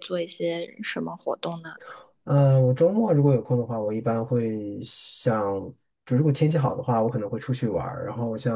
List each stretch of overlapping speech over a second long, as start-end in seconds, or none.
none